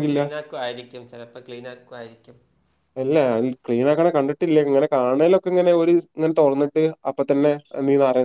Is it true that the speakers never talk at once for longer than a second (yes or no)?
yes